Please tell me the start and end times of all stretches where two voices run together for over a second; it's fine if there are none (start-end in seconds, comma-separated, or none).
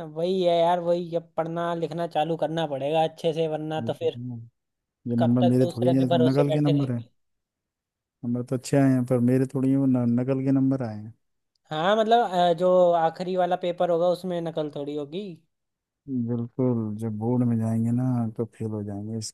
5.2-7.0